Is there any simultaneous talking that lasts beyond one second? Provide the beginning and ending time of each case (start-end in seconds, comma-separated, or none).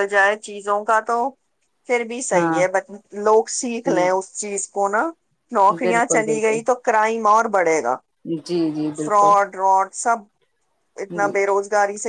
none